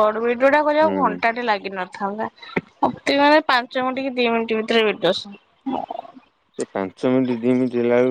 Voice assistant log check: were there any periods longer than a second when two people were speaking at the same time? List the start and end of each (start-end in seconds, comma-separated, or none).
none